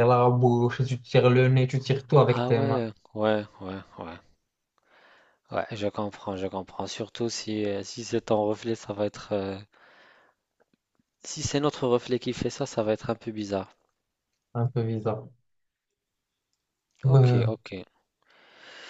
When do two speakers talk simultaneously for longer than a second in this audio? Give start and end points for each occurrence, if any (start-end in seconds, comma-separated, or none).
none